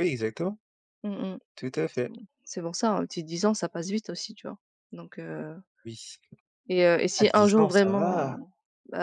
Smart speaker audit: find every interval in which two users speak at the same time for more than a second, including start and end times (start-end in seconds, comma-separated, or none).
7.2-8.4